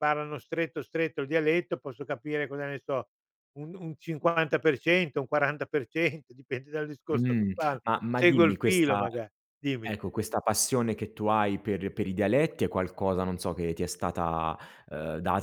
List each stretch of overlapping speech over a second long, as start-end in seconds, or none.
7.1-9.0